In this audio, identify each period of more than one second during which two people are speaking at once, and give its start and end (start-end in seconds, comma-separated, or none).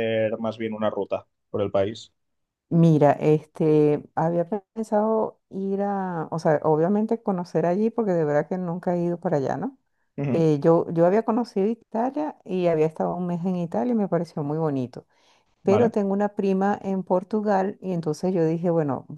none